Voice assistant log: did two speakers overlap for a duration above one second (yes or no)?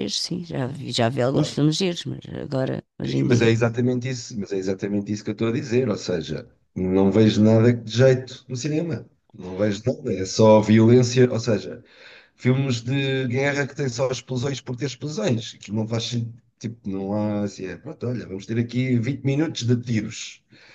no